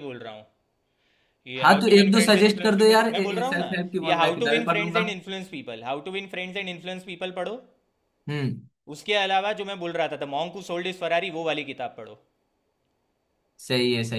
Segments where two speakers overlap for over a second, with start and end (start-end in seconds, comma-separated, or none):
1.6-5.0